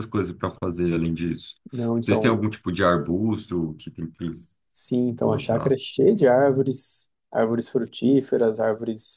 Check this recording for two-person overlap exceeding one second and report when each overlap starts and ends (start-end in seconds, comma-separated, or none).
none